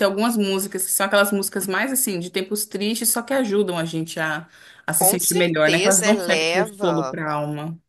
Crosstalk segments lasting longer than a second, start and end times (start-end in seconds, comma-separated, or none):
5.0-7.2